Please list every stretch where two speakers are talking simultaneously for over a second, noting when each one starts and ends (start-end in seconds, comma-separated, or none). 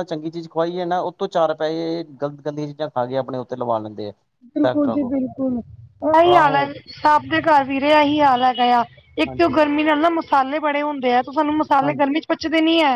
none